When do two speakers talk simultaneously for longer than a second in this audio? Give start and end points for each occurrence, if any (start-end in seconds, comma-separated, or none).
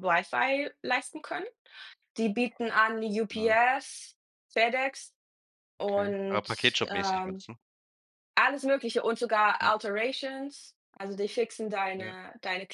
5.8-7.4